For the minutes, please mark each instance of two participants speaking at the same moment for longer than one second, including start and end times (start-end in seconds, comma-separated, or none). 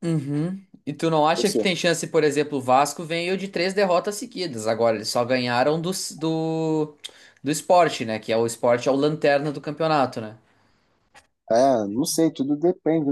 none